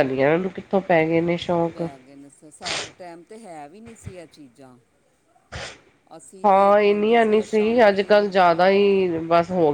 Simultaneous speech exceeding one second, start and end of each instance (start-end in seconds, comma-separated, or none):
6.4-9.0